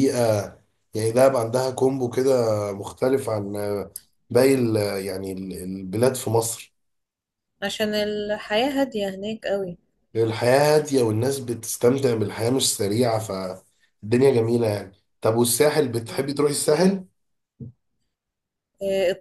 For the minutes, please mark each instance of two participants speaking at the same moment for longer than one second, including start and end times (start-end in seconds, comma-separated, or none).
none